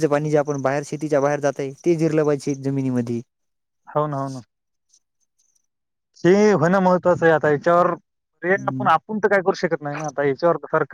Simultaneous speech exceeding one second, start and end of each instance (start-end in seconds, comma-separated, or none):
none